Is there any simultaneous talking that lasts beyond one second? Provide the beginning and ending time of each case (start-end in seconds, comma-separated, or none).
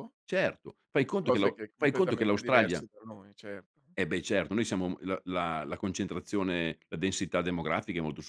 1.2-2.9